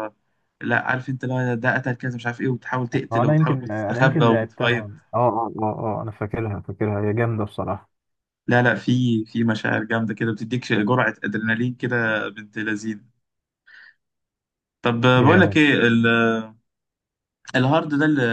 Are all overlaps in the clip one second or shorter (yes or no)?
no